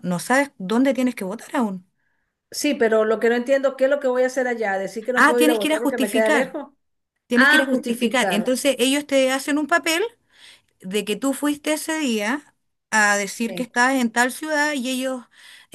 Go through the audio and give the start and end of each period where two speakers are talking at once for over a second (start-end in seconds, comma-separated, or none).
5.1-6.6, 7.3-8.6